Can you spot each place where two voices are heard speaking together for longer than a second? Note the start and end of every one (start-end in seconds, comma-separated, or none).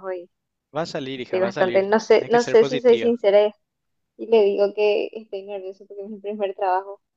1.1-3.1